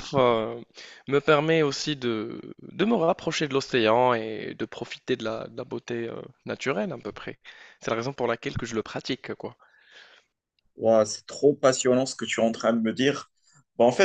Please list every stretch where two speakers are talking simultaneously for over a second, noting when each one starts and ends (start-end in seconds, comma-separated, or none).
none